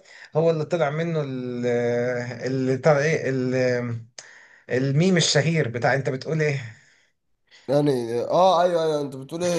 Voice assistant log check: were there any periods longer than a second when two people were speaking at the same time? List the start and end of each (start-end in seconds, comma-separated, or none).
none